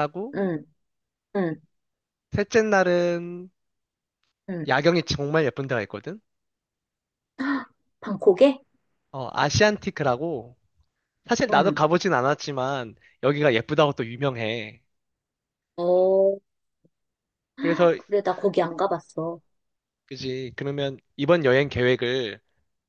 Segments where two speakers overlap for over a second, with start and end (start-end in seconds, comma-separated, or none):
none